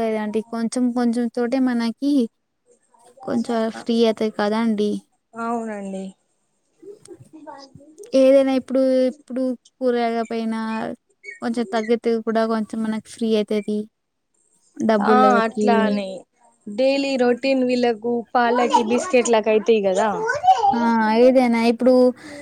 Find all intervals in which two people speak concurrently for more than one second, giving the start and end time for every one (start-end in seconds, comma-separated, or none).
none